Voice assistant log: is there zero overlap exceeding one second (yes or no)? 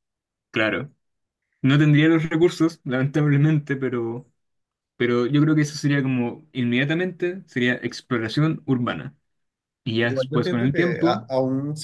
no